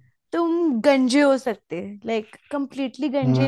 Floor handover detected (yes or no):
no